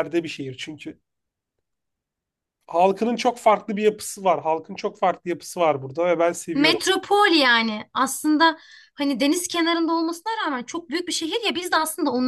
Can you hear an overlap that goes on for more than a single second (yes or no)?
no